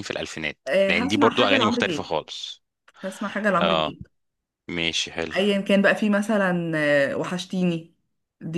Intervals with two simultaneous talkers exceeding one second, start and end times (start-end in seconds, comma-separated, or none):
0.7-2.1